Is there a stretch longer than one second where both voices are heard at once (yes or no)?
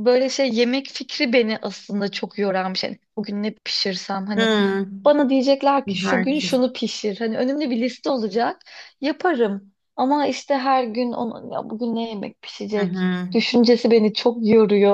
no